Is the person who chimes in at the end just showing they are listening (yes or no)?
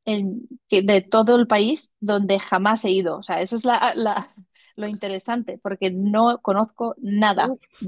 no